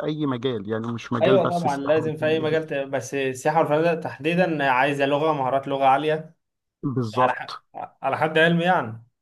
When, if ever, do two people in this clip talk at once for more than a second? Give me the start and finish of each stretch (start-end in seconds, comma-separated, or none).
1.2-2.6